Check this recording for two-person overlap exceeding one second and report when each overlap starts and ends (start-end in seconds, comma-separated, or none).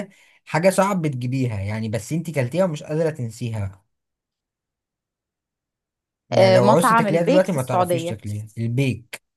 6.3-8.2